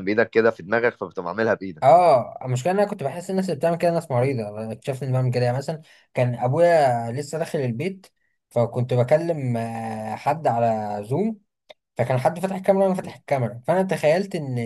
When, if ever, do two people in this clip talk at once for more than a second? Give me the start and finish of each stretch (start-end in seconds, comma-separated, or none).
none